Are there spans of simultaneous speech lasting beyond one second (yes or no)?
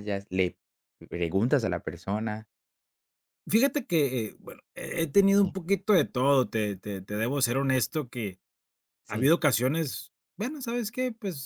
no